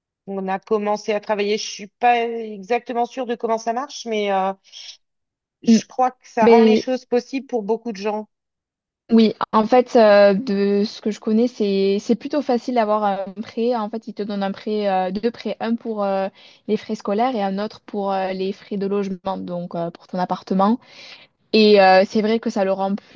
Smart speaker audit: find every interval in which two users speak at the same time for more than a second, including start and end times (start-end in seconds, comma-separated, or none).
none